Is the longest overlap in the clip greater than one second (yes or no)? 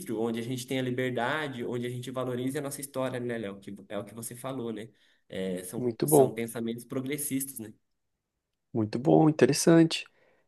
no